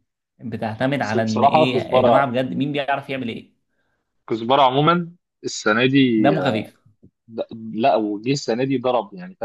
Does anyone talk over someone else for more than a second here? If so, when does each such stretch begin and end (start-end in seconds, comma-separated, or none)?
1.0-2.3